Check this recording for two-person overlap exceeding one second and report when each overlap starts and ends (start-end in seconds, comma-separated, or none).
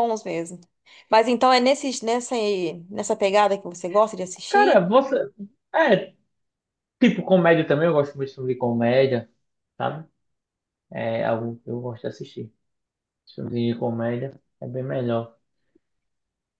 none